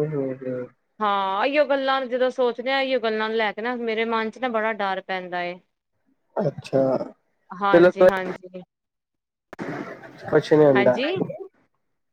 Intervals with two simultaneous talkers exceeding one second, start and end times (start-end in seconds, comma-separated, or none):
none